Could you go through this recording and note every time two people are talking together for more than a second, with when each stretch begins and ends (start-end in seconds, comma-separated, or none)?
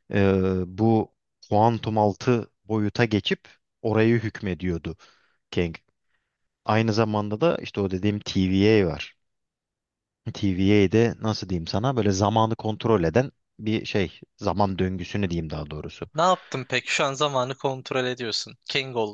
none